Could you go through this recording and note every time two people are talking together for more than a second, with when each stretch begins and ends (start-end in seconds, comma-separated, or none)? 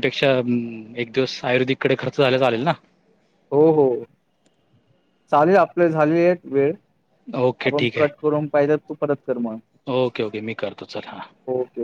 none